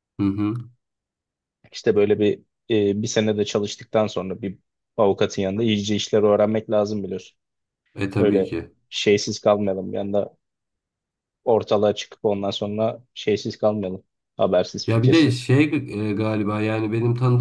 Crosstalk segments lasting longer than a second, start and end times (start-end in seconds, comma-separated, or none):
none